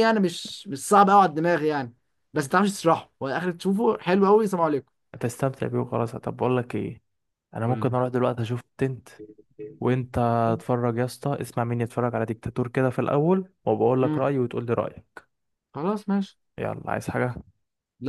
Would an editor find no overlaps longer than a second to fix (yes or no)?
yes